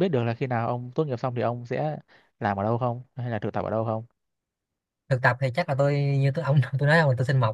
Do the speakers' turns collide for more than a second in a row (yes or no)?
no